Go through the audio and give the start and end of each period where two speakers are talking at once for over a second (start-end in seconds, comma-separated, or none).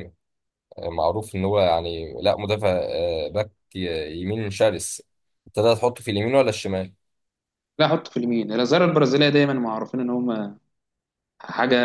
none